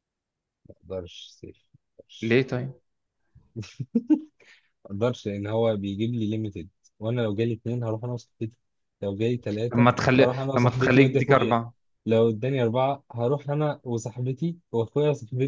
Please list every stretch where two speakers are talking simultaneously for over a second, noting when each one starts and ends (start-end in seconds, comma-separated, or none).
9.7-11.6